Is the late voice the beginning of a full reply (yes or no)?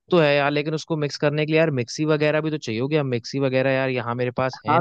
yes